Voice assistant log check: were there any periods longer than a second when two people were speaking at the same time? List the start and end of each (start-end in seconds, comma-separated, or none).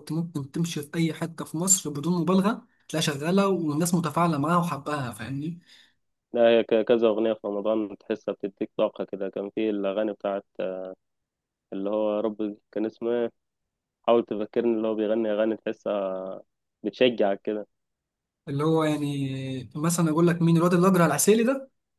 none